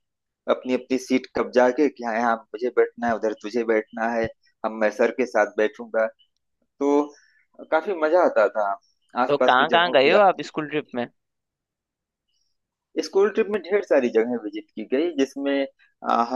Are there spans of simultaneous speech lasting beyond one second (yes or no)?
yes